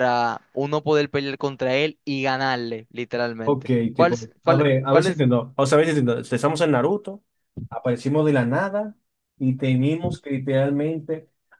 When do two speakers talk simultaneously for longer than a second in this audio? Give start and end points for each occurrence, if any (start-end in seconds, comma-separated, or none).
3.4-5.2